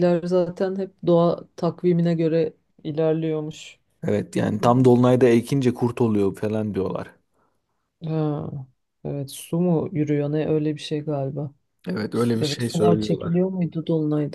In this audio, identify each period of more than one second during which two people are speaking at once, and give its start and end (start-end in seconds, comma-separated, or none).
12.1-13.3